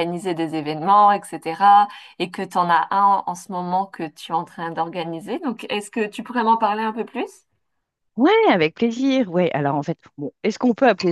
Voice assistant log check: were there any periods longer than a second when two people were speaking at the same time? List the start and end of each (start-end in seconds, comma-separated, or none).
none